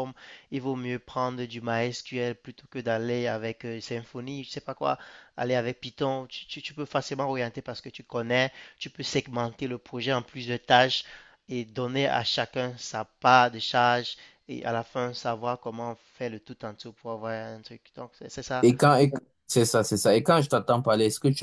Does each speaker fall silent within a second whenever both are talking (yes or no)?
yes